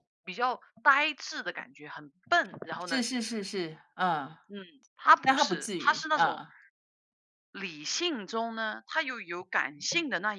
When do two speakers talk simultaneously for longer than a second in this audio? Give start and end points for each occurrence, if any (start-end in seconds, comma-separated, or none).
5.2-6.4